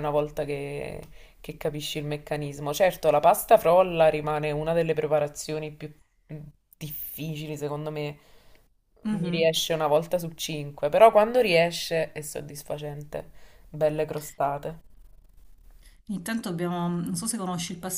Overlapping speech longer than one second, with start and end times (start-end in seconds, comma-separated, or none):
none